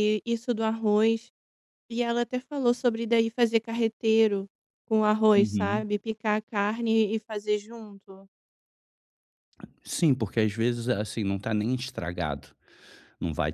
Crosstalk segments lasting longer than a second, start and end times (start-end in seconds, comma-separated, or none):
none